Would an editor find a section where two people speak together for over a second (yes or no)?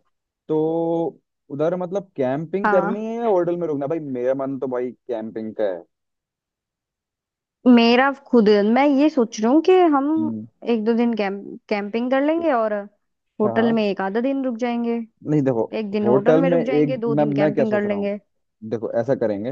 yes